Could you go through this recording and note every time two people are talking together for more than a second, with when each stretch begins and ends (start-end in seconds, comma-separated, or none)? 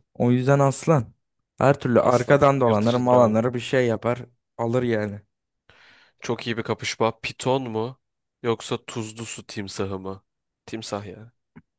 2.0-3.4